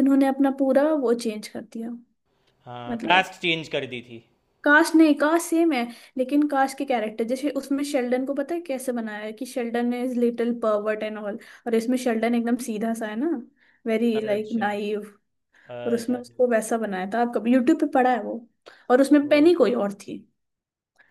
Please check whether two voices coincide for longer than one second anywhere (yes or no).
no